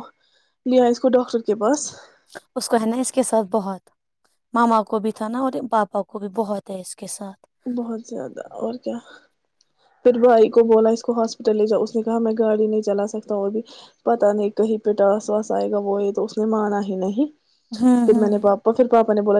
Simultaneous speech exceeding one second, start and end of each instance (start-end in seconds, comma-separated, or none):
none